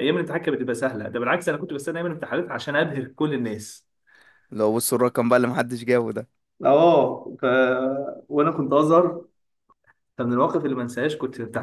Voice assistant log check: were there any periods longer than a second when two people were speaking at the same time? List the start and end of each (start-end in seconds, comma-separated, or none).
none